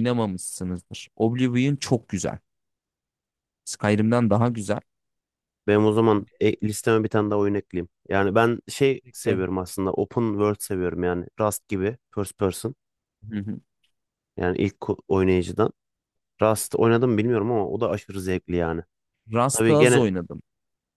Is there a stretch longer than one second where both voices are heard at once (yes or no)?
no